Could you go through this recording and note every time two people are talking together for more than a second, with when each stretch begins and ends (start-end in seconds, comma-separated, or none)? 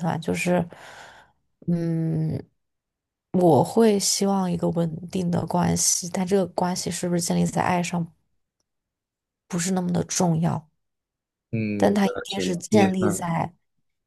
11.8-13.2